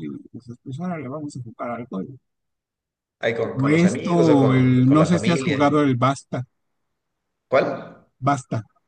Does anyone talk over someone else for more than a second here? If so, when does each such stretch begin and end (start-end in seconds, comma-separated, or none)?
3.6-5.6